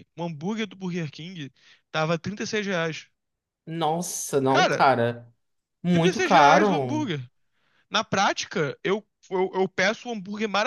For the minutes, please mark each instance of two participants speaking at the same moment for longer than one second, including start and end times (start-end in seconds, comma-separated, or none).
5.9-7.1